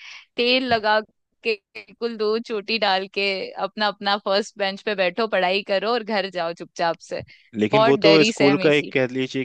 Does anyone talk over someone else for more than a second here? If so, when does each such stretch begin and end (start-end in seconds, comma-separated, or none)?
7.7-8.9